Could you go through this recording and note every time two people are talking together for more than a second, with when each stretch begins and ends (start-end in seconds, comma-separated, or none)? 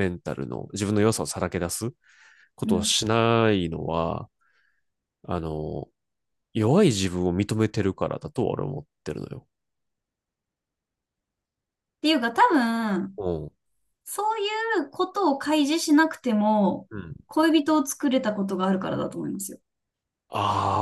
none